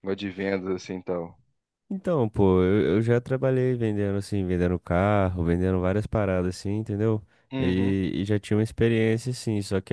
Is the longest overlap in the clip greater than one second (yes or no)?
no